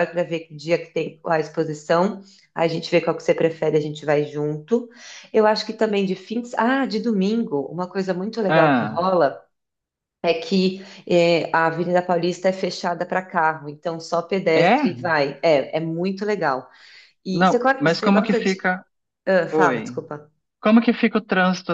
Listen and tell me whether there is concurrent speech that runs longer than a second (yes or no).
yes